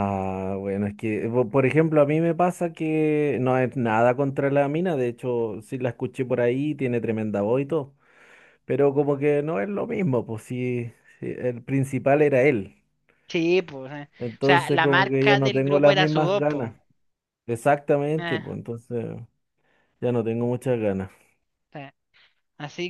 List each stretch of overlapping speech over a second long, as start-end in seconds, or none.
14.2-16.7